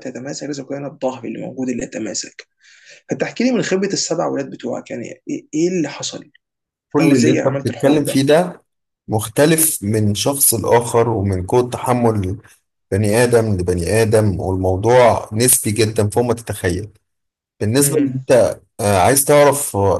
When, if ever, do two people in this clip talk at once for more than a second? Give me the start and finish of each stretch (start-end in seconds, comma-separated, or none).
7.0-8.2